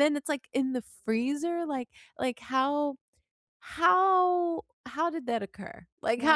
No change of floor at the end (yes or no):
yes